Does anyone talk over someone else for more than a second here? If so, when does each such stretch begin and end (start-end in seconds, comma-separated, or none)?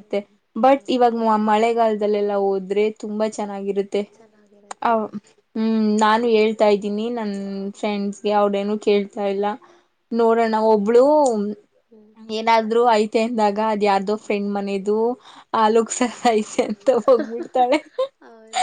none